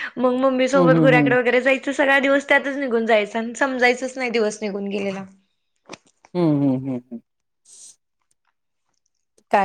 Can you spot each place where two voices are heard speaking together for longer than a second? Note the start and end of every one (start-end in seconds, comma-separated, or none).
none